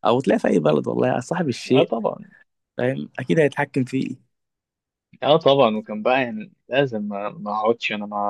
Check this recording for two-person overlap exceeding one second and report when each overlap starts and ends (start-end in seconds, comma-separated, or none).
none